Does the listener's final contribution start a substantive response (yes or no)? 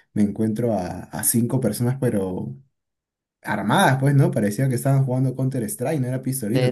yes